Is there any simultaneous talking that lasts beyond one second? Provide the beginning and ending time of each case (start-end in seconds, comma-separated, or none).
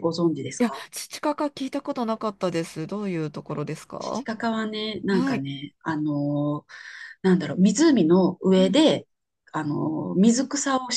none